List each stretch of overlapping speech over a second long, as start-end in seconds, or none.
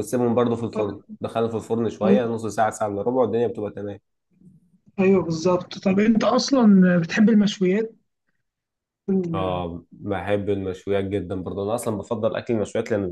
none